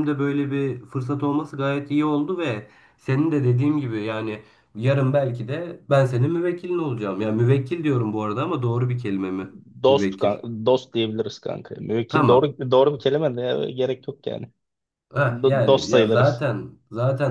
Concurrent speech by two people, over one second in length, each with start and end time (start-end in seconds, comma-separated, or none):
15.2-16.4